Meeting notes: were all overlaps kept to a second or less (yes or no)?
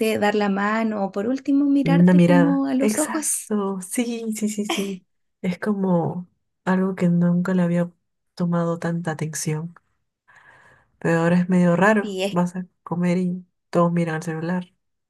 no